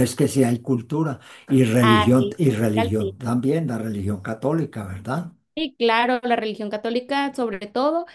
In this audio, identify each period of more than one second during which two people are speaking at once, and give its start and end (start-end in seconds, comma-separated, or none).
1.8-3.1